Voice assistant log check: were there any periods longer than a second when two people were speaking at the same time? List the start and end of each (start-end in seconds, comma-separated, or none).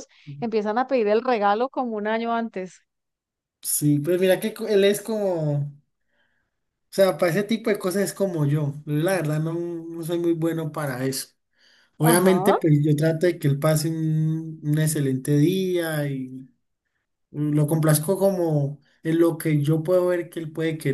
none